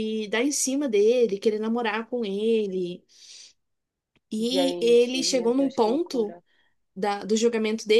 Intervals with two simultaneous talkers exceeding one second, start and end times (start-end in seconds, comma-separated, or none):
4.4-6.4